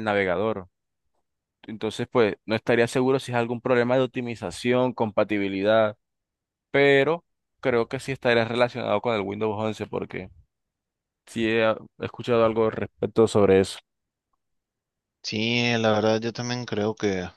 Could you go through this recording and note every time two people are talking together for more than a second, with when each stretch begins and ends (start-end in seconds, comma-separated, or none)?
none